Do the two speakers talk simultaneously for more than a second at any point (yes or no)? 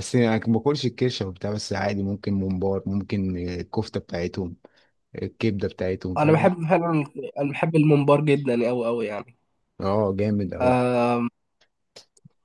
no